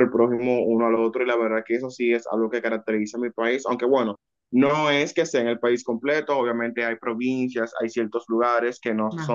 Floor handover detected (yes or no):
no